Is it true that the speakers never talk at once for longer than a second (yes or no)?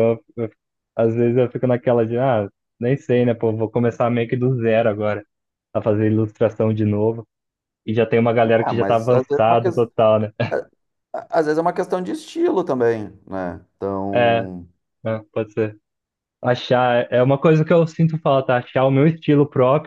no